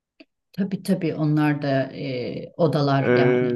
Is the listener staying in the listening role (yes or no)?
no